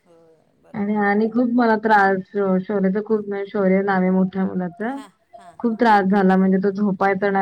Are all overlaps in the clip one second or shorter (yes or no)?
yes